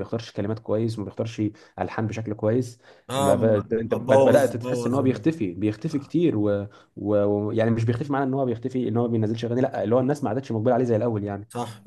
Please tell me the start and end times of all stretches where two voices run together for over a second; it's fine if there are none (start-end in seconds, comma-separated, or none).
3.1-5.2